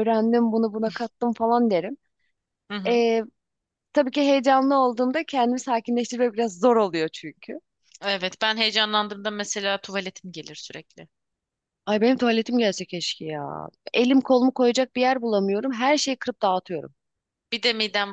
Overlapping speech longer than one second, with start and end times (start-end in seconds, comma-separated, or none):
none